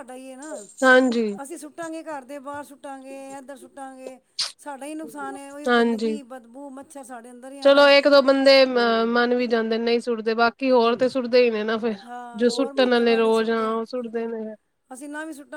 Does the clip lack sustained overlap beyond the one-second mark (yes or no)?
no